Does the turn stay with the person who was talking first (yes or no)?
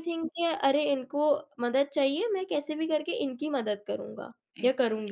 no